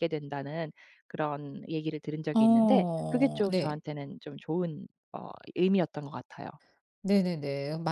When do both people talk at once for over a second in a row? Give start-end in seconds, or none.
2.3-3.8